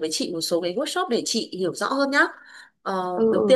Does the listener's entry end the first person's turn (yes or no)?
no